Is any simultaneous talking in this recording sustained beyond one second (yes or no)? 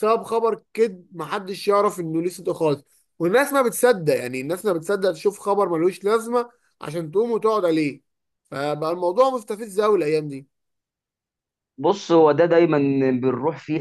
no